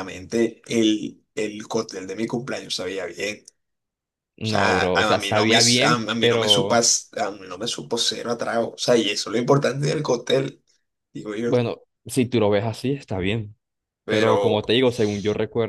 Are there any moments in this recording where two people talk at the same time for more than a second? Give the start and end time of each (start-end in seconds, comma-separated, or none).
4.4-6.8